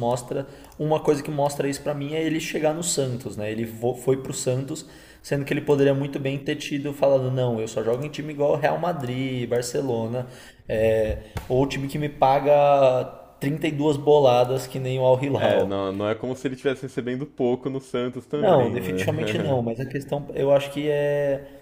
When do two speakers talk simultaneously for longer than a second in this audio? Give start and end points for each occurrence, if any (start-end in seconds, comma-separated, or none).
18.3-19.6